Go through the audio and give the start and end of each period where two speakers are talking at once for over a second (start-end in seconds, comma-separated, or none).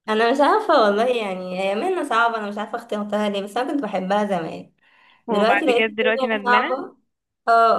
5.3-6.8